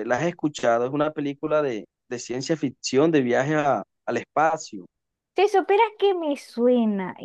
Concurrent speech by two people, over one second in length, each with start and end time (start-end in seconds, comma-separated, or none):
none